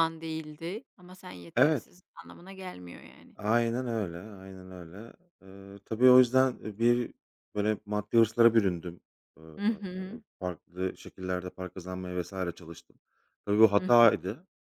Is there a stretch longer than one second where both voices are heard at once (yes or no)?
no